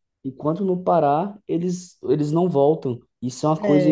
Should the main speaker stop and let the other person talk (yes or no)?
yes